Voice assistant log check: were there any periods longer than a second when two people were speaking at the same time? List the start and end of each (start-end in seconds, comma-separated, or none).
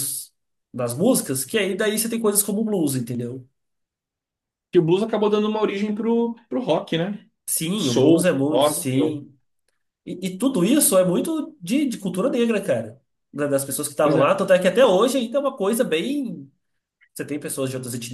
7.7-9.2